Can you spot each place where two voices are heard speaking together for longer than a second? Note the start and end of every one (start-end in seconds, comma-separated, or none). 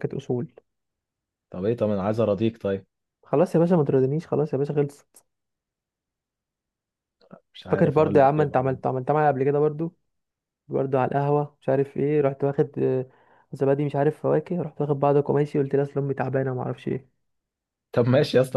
7.7-8.9